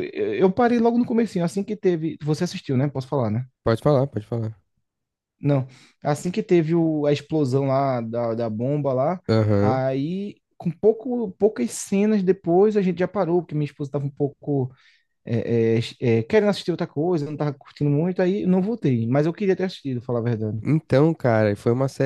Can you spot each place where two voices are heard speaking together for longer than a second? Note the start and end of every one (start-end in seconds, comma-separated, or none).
none